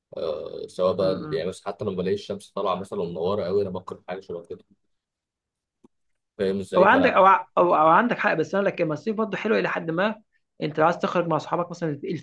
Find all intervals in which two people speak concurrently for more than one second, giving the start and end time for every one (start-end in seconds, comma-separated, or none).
none